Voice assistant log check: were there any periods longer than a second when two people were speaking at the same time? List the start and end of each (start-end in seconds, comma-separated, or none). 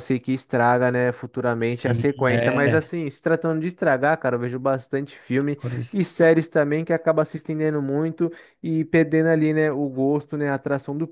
1.6-2.9